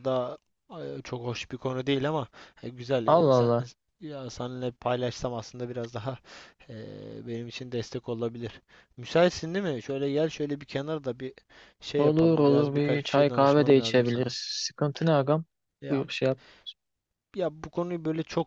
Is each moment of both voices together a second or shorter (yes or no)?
no